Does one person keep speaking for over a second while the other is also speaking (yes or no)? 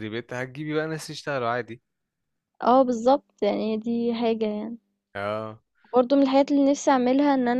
no